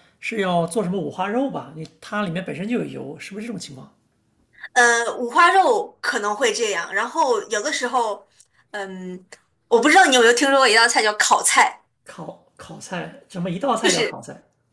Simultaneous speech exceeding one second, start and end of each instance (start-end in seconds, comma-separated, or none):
none